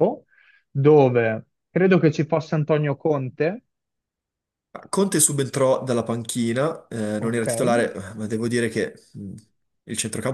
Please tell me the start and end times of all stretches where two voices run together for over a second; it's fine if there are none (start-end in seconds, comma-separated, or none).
none